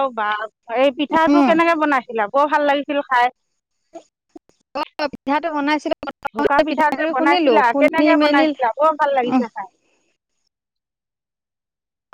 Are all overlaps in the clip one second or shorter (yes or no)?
no